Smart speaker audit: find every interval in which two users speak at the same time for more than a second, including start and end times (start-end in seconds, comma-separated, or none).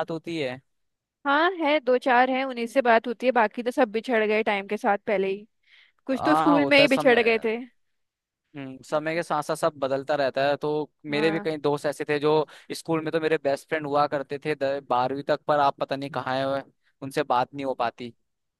6.1-7.5